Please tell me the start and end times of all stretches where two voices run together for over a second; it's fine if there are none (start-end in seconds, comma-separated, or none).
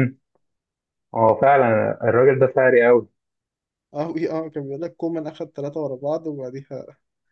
none